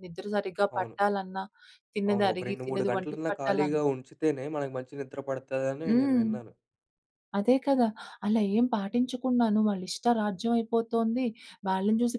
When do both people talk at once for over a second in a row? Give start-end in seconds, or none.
2.1-3.8